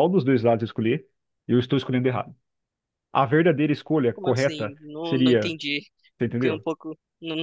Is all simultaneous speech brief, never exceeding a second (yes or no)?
no